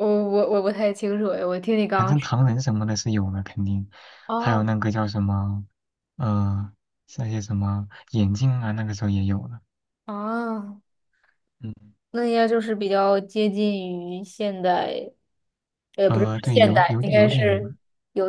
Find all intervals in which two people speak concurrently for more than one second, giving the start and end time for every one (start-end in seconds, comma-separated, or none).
16.1-17.7